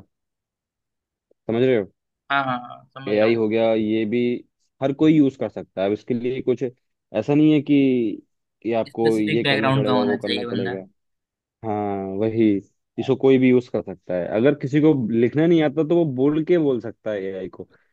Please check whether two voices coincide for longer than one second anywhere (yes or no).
yes